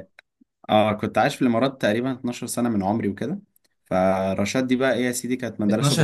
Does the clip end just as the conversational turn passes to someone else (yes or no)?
yes